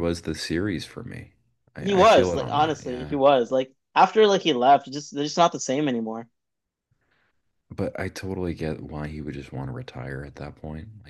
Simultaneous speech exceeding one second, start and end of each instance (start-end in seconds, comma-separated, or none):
1.8-3.2